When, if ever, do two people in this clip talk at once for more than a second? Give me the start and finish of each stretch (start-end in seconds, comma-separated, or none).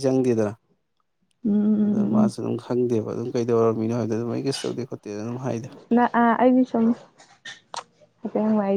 none